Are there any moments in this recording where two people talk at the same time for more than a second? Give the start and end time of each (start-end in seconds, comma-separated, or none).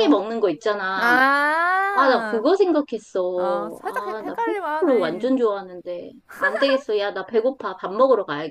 3.4-5.3